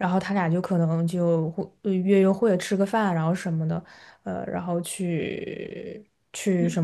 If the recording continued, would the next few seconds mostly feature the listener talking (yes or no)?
yes